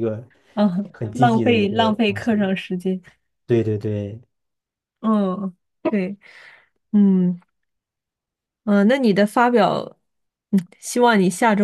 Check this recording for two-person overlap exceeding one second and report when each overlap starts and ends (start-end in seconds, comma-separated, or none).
0.9-2.5